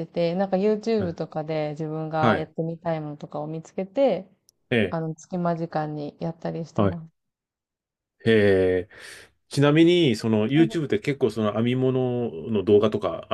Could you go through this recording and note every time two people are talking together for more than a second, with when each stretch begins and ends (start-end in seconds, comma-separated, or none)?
none